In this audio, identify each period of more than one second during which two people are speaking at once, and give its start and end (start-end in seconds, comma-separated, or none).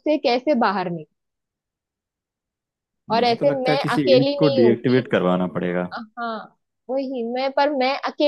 3.2-5.0